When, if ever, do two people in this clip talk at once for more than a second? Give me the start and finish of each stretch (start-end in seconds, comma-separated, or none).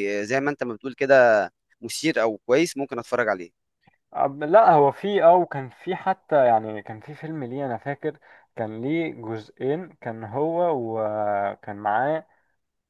none